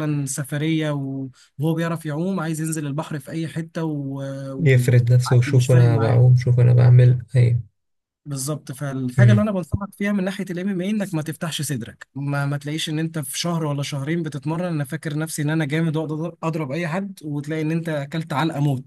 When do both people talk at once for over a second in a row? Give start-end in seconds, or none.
4.6-6.2